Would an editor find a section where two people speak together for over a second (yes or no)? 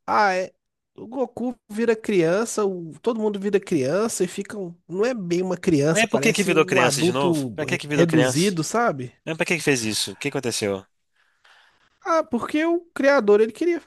yes